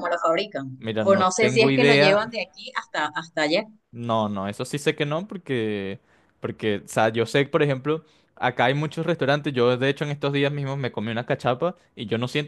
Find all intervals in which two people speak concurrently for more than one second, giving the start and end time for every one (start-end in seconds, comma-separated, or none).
0.8-2.3